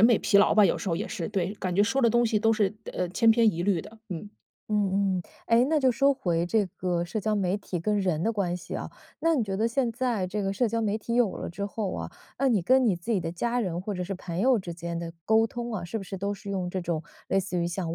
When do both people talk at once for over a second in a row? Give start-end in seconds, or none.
none